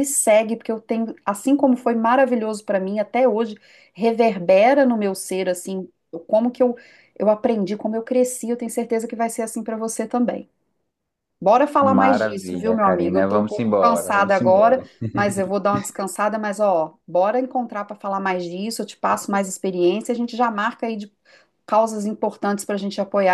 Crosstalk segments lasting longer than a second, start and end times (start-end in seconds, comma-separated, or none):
11.9-14.8